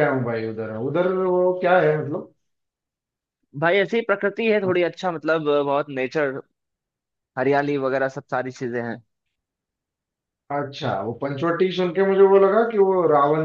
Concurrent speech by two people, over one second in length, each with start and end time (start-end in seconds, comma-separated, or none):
none